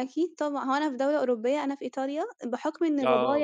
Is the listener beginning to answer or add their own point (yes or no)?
no